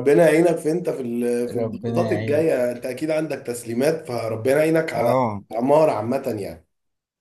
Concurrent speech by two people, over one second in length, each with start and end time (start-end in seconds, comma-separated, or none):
1.5-2.7